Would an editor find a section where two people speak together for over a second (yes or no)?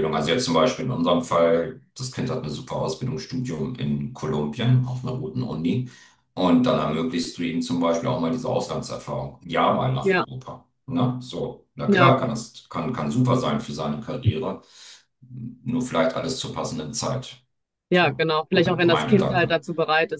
yes